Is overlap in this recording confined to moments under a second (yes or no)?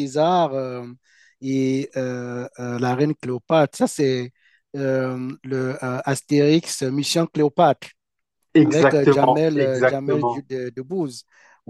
no